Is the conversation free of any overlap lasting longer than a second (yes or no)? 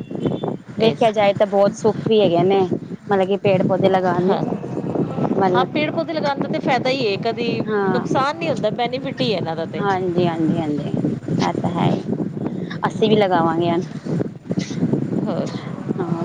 yes